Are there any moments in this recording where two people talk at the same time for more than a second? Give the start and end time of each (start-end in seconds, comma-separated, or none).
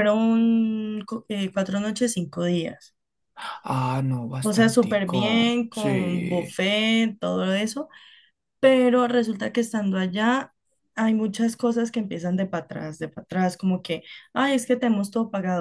4.4-6.6